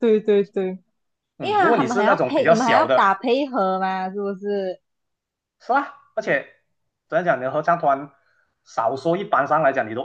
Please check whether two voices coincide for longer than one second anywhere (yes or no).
yes